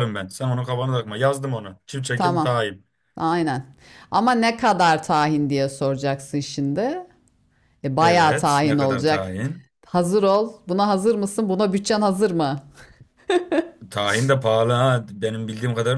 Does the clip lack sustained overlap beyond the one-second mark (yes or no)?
no